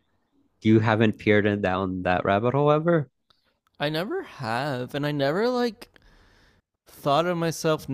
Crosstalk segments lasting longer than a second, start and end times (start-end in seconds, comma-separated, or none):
none